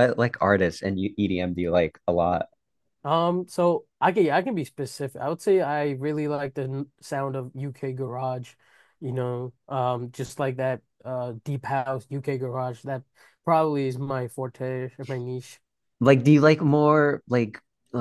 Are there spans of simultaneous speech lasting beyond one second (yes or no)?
no